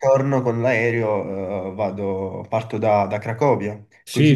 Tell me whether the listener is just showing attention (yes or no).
no